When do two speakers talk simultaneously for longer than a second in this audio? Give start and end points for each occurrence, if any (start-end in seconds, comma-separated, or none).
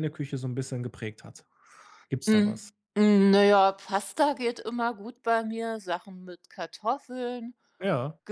none